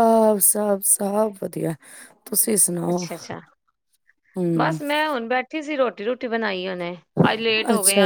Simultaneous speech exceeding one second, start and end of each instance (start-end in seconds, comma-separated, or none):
none